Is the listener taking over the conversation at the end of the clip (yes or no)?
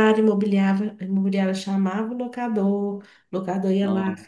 no